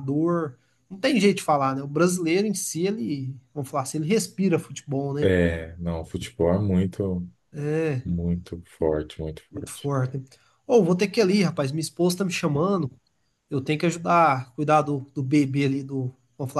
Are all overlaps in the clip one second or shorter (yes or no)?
yes